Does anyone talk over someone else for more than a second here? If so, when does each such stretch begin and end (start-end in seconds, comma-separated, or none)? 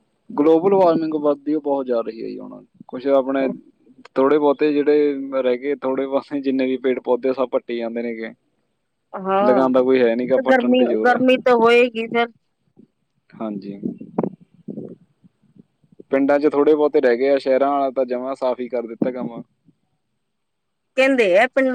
9.5-11.2